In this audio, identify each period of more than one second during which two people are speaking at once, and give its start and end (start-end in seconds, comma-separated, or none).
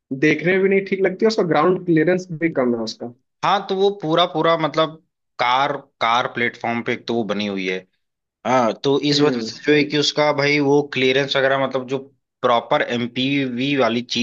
none